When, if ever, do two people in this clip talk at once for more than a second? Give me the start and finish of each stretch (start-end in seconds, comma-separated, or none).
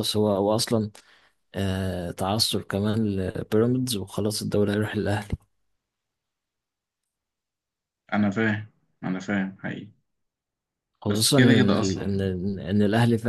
11.1-12.3